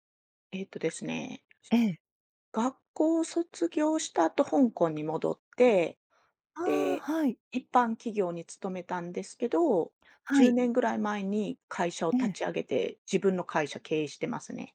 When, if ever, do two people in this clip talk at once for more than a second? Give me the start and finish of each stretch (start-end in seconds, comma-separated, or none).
none